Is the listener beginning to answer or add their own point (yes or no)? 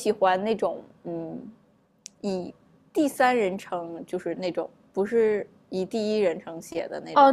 yes